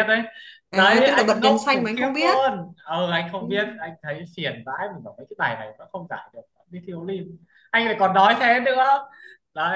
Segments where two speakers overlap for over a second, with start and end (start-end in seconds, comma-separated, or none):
0.7-2.4